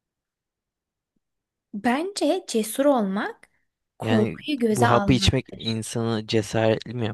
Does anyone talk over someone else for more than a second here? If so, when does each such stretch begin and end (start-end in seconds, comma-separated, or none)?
4.0-5.6